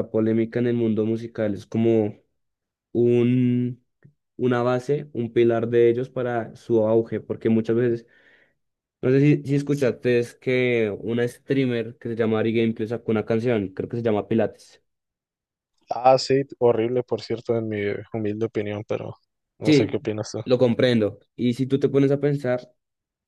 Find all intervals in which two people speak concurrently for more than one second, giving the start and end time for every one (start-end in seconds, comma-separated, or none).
none